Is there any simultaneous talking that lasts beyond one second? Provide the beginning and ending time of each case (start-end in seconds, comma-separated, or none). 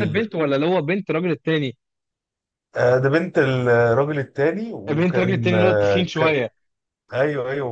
4.9-6.4